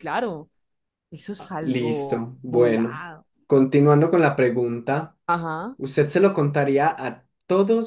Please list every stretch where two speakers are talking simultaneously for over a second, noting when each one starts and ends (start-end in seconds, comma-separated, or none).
1.6-3.0